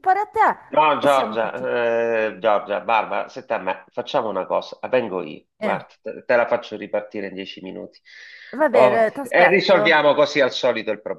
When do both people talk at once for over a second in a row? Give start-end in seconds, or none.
8.7-10.0